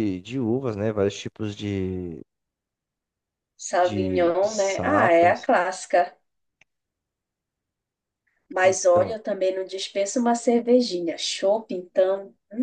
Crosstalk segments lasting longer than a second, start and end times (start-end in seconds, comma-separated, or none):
3.8-5.5